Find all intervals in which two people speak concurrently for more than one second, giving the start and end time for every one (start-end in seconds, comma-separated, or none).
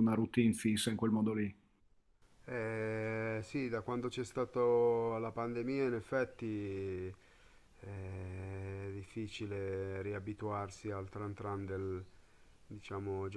none